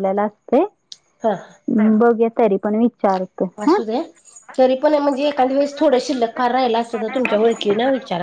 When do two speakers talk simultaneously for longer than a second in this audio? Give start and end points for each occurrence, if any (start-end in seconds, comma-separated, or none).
none